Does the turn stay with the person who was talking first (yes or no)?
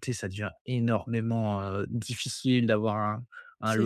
yes